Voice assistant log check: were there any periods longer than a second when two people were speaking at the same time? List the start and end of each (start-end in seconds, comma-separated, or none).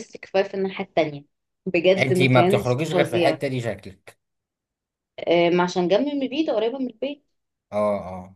2.0-3.4